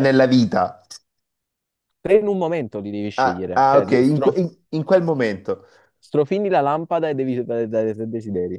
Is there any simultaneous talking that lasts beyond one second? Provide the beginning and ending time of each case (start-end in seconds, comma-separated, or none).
3.1-4.4